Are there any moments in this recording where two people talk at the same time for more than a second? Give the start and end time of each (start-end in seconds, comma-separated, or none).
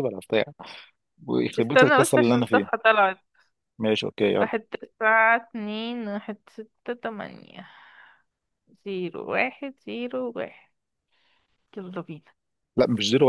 1.6-2.9